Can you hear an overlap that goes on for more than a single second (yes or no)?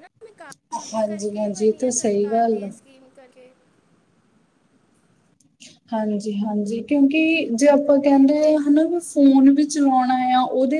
yes